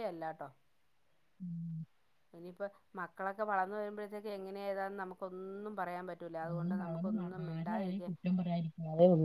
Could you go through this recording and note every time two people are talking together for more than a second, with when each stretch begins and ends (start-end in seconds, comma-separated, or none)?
6.5-8.1